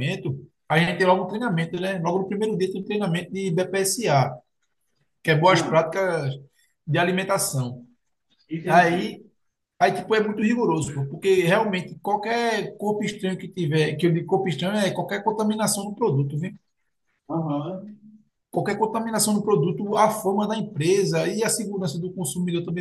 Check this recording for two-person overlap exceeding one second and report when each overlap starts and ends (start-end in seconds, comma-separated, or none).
none